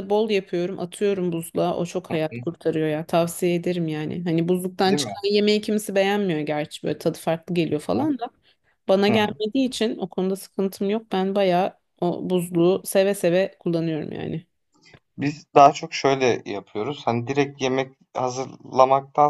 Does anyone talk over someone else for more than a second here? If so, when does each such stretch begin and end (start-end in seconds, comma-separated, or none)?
none